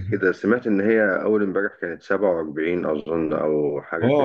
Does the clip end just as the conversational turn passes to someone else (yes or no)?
yes